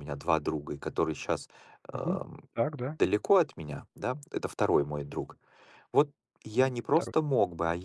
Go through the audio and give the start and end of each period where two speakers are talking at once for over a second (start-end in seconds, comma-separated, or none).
none